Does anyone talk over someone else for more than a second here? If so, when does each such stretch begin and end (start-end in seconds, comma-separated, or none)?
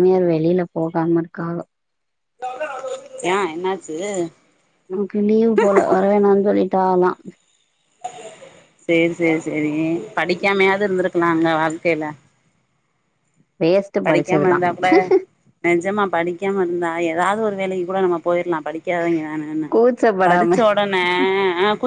none